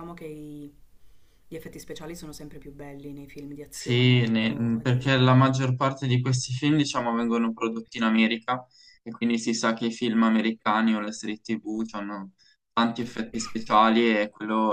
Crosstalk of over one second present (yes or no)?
yes